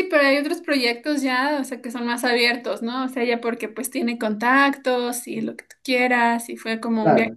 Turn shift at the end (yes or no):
no